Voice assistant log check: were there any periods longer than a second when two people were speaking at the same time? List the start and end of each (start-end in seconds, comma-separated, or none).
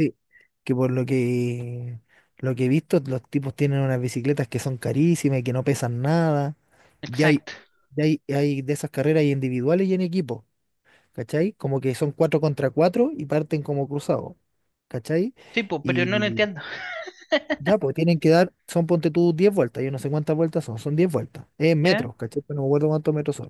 none